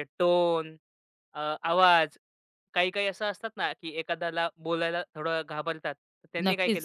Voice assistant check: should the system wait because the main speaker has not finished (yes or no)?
no